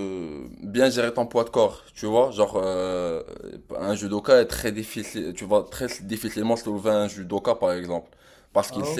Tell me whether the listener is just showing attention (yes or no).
yes